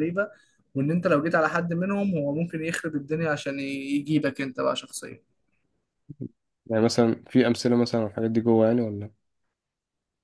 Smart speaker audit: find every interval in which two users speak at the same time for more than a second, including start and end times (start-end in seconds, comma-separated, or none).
none